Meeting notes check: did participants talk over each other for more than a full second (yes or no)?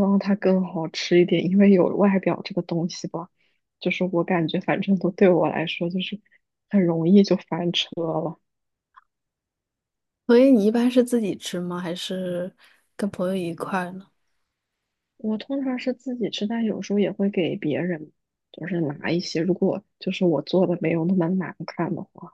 no